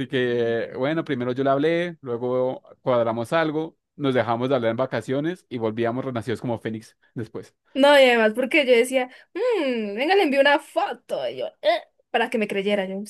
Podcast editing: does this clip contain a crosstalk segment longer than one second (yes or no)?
no